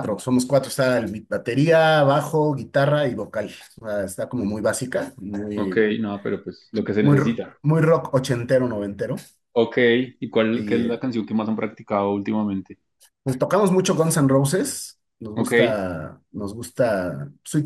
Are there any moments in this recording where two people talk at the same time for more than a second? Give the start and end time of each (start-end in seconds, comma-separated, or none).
none